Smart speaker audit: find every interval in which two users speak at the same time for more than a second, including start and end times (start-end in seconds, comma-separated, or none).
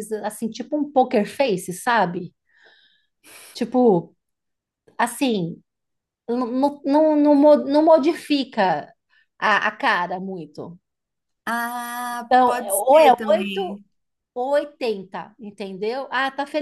12.3-13.8